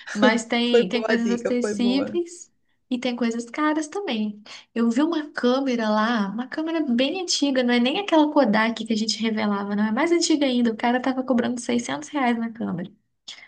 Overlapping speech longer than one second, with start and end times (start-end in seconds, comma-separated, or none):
0.7-2.2